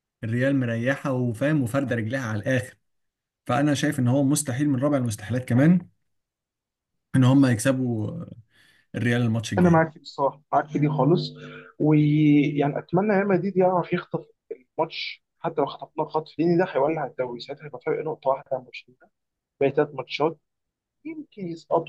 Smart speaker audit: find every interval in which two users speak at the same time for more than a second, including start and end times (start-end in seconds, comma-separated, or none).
none